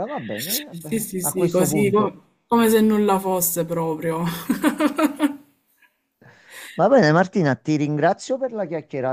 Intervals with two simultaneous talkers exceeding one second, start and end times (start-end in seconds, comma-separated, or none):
0.9-2.2